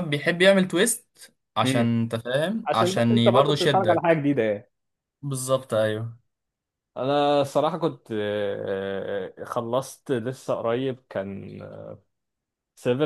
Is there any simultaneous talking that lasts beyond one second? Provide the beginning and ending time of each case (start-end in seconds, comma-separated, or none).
2.7-4.2